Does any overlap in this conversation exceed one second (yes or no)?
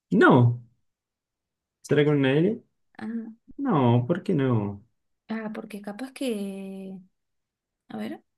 no